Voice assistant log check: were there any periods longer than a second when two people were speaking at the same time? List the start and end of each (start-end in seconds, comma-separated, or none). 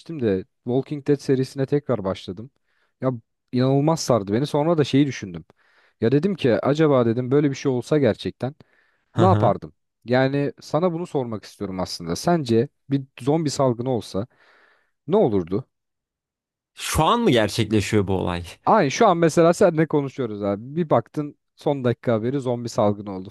none